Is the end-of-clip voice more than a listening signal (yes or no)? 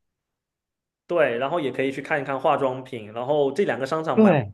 no